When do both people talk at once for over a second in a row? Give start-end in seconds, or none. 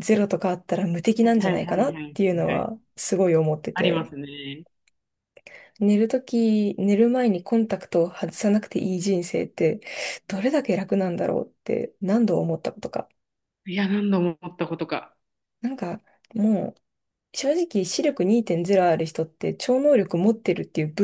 1.2-2.7